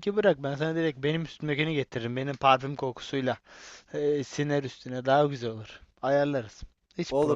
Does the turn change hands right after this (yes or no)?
yes